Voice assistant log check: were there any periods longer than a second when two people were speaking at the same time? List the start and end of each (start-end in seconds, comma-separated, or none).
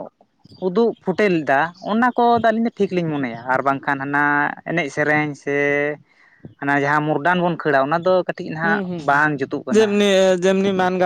none